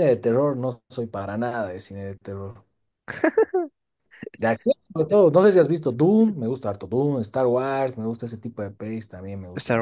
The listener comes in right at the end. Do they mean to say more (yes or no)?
yes